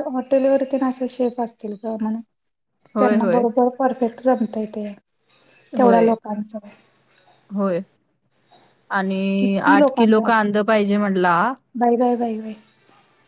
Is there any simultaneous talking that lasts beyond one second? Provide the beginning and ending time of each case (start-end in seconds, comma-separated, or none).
none